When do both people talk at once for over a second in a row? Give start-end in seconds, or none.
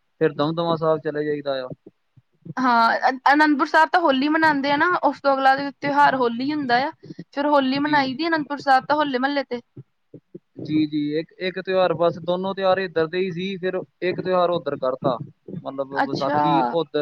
none